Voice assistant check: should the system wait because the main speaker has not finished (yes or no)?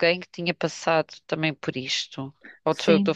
no